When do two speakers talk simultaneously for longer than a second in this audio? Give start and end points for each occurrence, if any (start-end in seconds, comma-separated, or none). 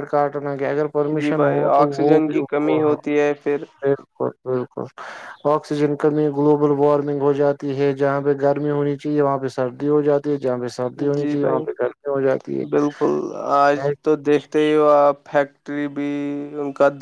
1.2-2.8